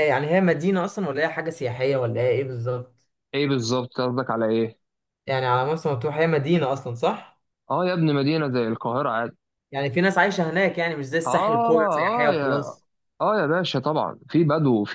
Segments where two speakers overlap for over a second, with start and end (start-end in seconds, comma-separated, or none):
11.2-12.8